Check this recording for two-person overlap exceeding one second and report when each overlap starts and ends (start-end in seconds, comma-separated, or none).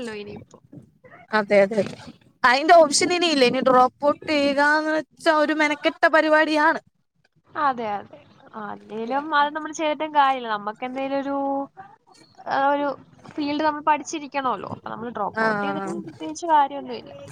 none